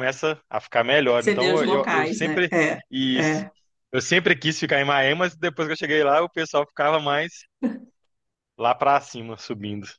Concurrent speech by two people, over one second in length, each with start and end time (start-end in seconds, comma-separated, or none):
1.2-2.5